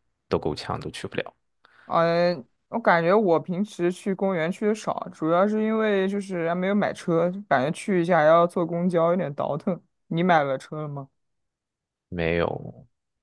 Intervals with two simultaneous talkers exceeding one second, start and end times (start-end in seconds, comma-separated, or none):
none